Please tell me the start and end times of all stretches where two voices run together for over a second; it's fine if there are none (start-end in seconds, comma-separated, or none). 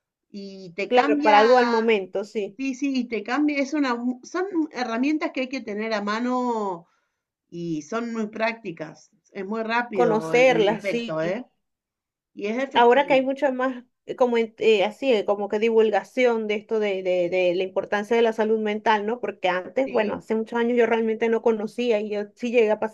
9.9-11.2